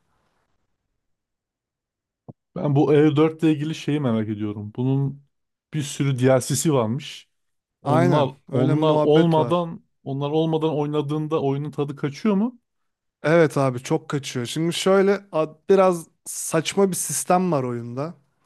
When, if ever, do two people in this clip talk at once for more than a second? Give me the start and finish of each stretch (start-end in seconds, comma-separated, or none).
7.8-9.7